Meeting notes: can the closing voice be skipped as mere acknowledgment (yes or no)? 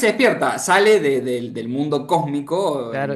no